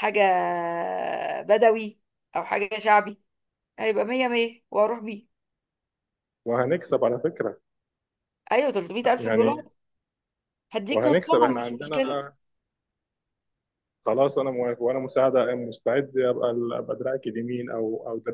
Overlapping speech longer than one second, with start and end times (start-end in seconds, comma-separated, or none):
10.9-12.2